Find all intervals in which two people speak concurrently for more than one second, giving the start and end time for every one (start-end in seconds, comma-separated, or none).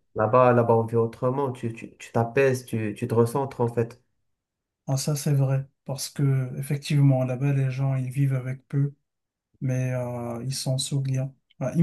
none